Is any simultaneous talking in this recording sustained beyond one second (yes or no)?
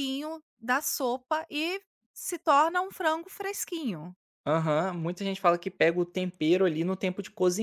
no